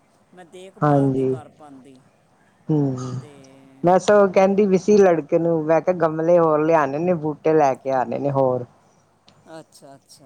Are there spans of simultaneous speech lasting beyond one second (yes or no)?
no